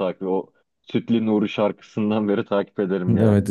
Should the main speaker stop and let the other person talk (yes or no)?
yes